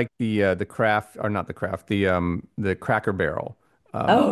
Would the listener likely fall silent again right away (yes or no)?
no